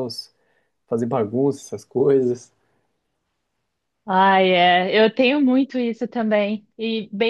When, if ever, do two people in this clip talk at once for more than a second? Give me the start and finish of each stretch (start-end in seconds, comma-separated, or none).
none